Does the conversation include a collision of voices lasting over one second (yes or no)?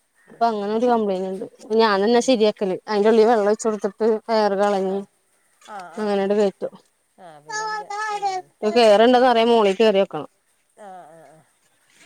no